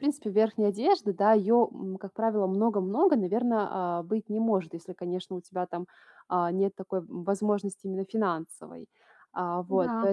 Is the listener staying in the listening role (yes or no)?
yes